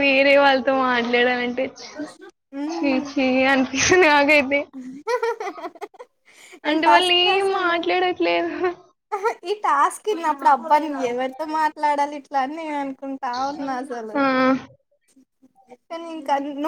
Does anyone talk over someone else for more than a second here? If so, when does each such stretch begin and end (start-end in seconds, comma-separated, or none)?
none